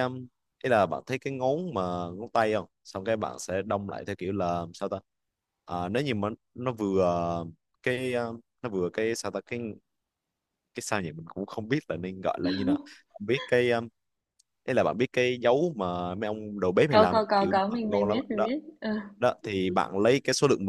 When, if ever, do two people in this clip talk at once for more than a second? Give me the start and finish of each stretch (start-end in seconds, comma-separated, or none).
16.9-18.5